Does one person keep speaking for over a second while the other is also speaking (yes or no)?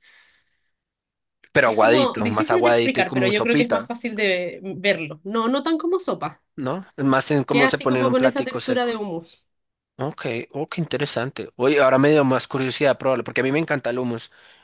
yes